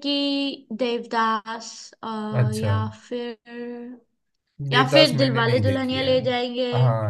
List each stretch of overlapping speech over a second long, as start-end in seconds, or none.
4.7-6.1